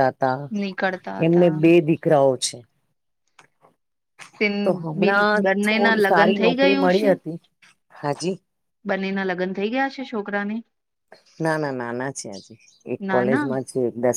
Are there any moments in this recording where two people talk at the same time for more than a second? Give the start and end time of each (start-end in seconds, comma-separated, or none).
5.0-7.1